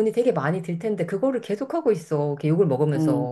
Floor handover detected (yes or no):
yes